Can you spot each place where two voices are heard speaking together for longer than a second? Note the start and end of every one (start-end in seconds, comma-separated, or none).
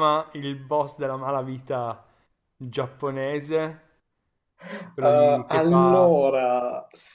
5.0-6.3